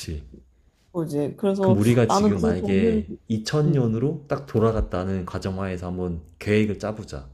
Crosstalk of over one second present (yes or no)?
yes